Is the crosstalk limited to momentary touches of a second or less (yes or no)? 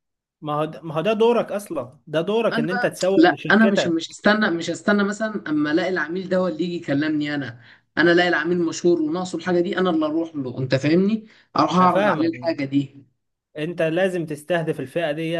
no